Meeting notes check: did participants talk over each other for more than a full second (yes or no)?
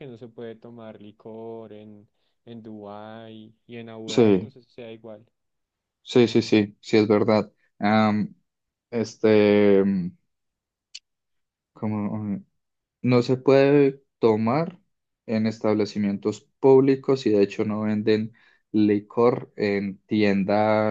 no